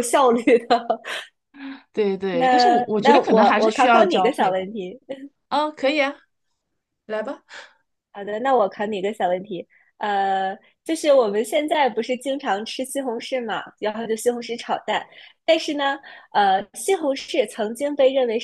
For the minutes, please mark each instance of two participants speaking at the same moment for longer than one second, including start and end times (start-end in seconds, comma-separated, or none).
2.3-4.6